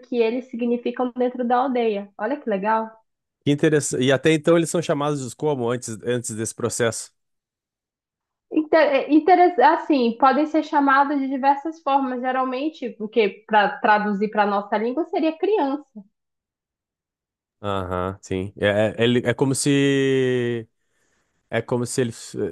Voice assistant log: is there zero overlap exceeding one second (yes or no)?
yes